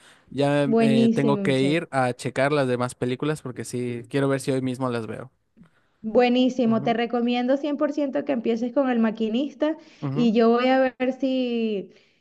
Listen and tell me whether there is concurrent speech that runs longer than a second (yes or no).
yes